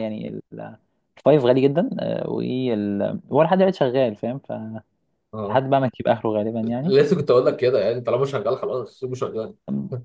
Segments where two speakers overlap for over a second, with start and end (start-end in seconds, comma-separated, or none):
none